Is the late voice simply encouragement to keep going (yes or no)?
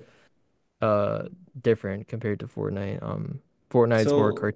yes